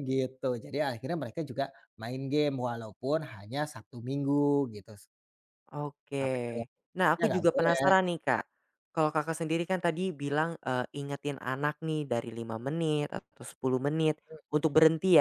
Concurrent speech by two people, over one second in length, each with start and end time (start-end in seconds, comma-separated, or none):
6.2-7.8